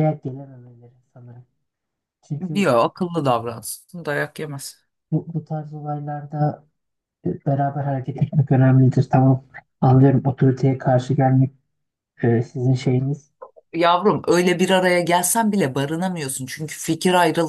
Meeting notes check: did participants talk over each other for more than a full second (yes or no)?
no